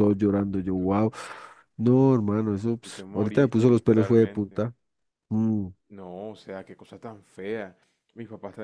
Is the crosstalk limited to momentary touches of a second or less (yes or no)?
no